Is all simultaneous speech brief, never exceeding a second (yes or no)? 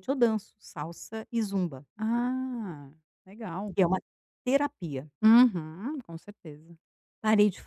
yes